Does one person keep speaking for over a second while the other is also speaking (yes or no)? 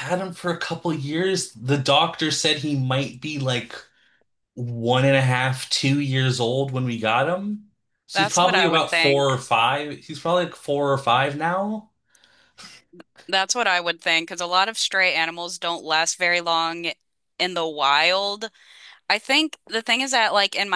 yes